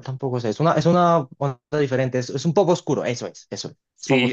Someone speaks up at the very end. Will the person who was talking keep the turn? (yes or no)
no